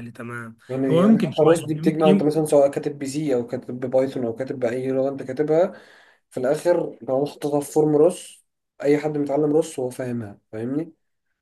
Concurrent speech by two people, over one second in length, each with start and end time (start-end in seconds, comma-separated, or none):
0.7-2.3